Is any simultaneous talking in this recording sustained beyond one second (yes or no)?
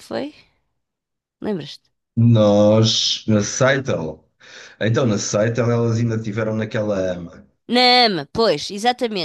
no